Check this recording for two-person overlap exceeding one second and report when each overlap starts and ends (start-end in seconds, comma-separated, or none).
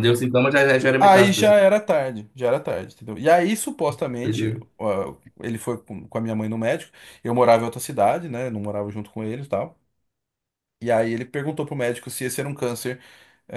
none